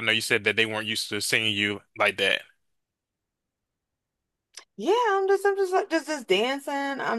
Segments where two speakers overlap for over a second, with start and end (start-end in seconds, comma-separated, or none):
none